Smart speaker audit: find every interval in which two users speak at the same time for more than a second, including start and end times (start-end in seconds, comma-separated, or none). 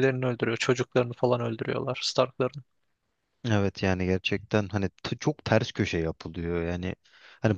none